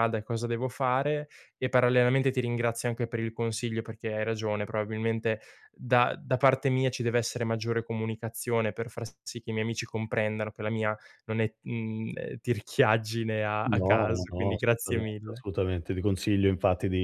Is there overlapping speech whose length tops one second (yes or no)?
yes